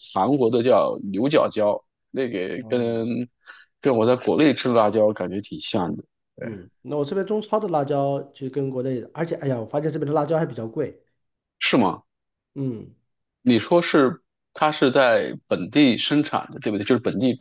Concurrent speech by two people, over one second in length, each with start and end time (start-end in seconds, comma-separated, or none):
none